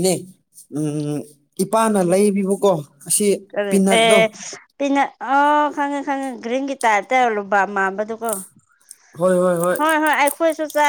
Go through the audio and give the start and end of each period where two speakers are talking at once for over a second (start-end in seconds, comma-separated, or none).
none